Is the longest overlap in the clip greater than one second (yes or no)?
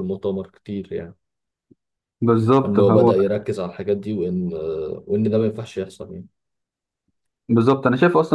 no